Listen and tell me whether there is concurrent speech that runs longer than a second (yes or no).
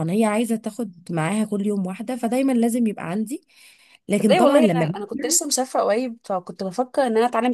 yes